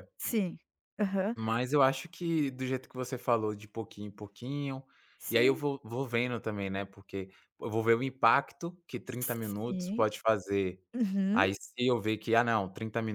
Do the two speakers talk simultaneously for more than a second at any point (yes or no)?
no